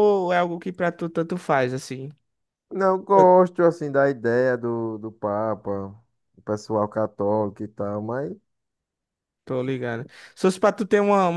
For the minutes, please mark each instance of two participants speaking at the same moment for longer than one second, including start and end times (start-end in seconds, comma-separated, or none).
none